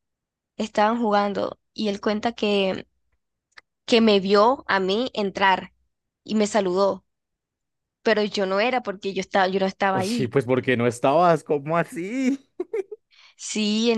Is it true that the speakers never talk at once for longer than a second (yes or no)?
yes